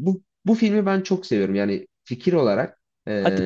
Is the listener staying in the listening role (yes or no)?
yes